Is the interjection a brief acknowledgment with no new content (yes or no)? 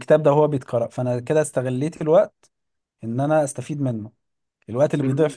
yes